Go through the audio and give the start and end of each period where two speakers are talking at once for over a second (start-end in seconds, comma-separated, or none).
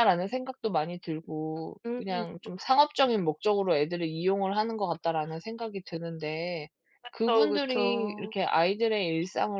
7.1-8.3